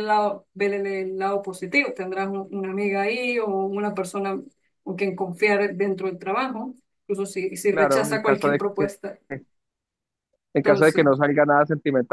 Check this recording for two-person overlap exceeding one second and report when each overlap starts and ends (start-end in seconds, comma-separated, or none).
7.7-8.9